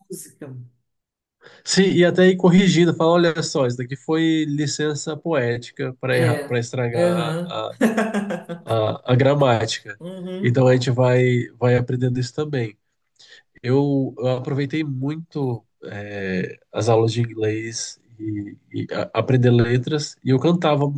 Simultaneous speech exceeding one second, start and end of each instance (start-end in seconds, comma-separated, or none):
6.1-7.6